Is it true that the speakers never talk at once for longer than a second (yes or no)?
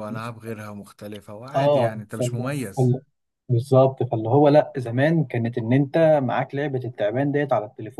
no